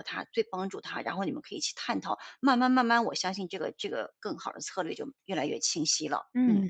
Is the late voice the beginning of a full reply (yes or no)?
yes